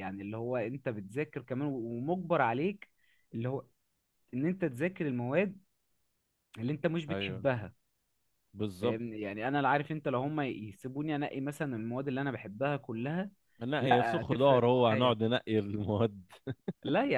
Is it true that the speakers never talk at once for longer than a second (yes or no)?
no